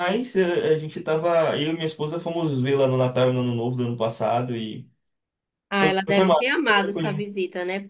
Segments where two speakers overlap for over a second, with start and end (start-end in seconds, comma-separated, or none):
5.8-7.2